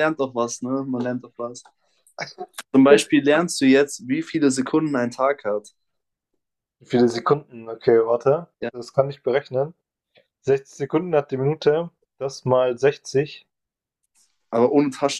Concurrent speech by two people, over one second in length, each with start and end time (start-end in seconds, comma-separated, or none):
none